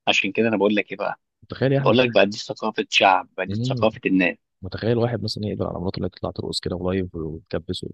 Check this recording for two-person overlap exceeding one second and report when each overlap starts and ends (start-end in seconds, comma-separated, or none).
none